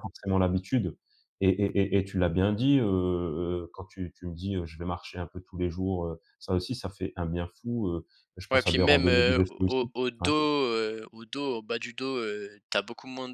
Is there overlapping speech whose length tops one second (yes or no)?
yes